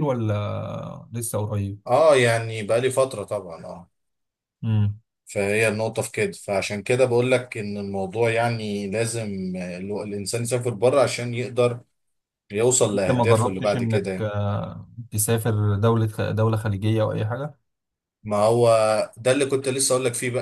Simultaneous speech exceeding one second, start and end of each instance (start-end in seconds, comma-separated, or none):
12.9-14.3